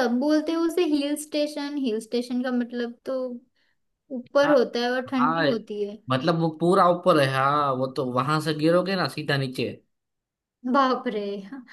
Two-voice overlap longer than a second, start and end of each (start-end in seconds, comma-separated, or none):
none